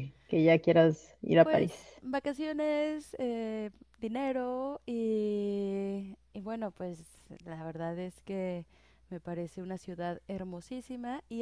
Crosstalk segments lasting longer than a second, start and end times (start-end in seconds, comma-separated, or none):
none